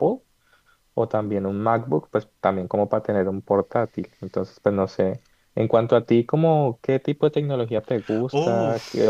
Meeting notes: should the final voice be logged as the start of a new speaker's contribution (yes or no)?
no